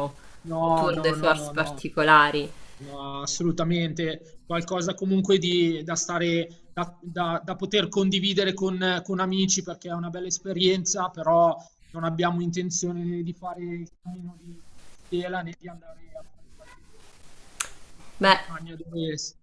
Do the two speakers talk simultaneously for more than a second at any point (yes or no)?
yes